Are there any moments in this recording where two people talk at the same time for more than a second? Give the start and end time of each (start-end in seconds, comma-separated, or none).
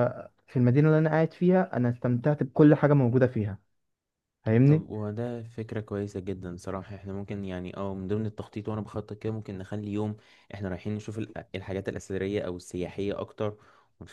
none